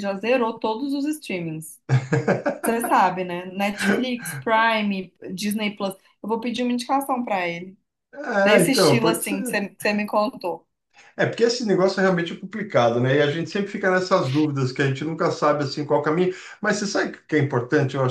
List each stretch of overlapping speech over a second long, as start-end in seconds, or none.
8.4-9.6